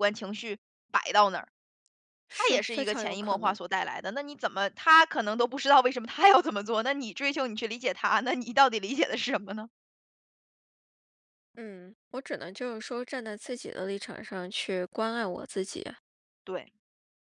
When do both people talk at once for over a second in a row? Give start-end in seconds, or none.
2.3-3.6